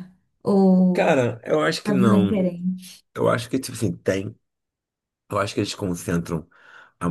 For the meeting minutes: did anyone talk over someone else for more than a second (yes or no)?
no